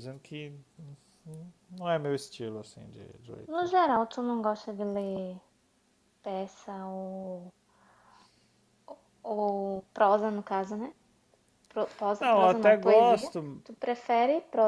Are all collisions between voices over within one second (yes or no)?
no